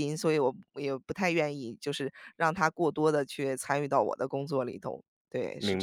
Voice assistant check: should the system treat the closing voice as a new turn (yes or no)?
yes